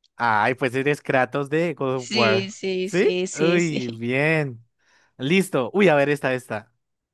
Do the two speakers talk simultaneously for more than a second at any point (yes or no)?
yes